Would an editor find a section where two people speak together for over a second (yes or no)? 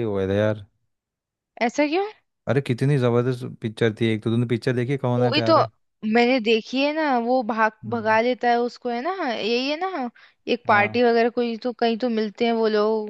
no